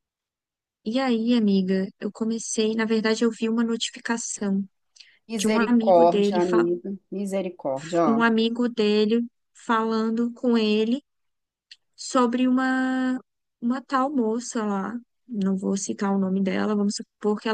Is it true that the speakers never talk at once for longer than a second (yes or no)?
no